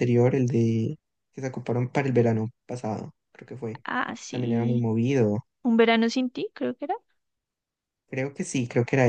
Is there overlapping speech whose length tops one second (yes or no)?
no